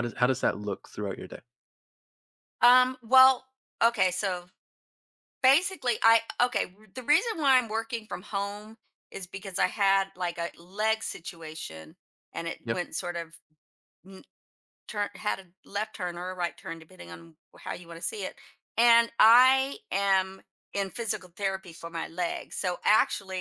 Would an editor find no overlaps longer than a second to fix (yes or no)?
yes